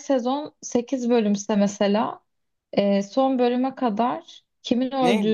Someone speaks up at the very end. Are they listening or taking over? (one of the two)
taking over